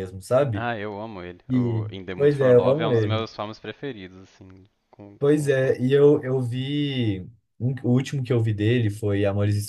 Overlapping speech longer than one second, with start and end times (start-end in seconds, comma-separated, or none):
1.5-3.3